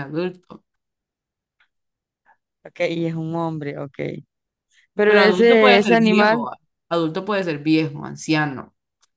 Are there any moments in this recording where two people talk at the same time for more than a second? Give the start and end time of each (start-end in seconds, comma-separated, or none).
5.0-6.5